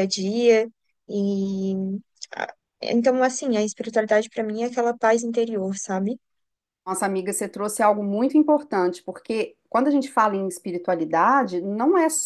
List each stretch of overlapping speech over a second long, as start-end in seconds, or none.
none